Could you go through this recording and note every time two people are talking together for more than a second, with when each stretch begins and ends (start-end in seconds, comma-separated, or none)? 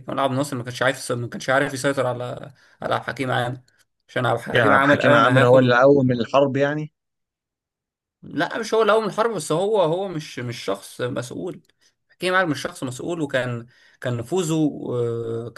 4.5-5.8